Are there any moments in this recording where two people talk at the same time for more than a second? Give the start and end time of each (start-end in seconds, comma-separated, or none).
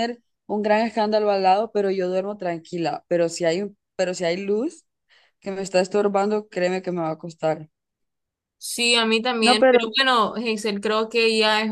none